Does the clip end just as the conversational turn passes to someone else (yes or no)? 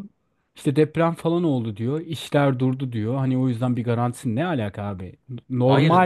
no